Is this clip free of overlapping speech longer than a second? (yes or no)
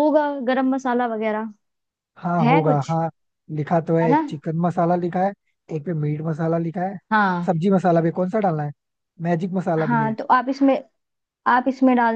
yes